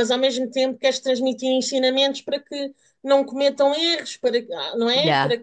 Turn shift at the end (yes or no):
no